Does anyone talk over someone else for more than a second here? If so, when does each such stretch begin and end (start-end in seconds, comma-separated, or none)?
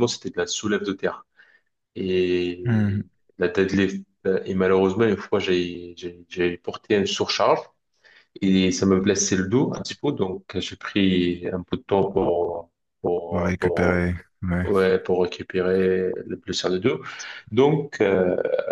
none